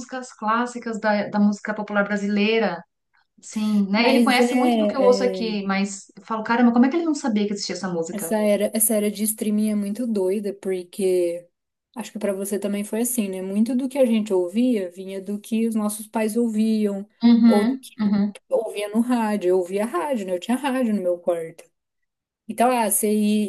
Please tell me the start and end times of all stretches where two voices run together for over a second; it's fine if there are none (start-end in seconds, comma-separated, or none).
4.0-5.6